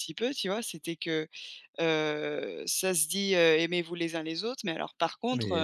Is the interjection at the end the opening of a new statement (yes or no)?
no